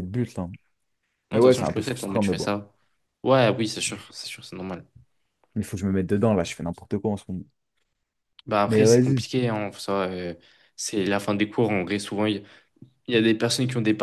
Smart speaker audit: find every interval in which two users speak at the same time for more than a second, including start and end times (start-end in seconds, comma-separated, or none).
1.3-2.5